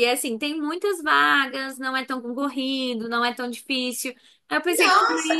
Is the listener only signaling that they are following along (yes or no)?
no